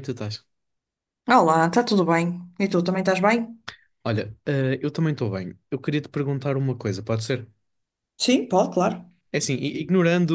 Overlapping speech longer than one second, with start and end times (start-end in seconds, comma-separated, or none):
none